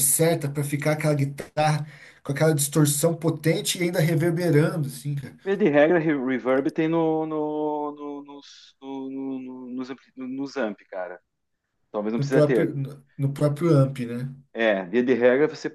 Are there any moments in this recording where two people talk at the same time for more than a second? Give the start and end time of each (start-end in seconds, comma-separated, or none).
none